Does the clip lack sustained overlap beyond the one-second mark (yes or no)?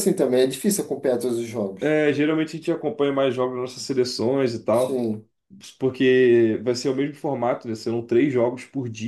yes